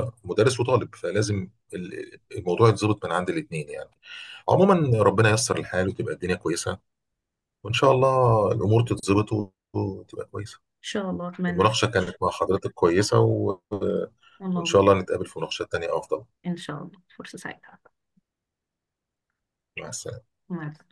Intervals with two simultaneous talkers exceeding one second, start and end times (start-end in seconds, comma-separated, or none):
none